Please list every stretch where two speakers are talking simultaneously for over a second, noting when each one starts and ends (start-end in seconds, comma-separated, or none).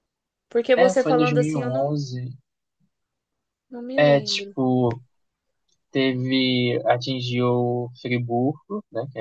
0.8-2.0